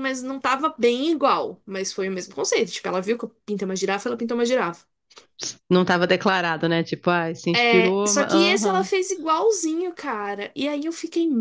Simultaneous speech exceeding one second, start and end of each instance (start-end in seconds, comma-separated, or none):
7.6-8.9